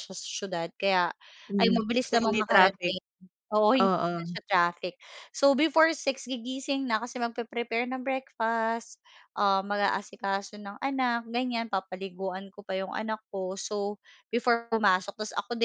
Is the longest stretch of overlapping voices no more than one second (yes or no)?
no